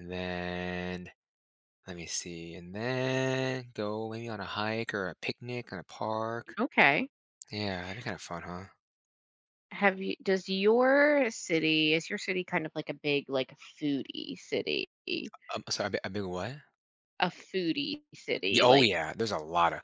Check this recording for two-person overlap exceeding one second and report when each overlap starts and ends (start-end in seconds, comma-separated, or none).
none